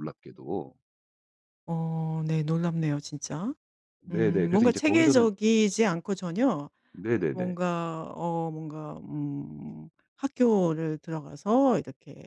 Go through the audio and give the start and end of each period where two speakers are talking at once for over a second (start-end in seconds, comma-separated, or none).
4.1-5.3